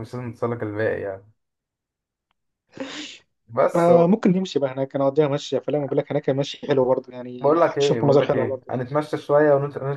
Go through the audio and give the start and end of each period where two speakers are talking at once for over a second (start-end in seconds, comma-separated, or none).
7.4-8.7